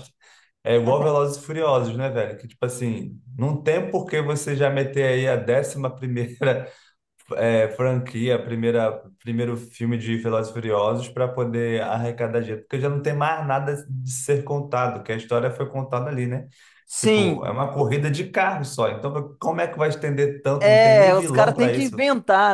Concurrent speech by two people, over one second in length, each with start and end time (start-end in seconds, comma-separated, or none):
20.6-22.0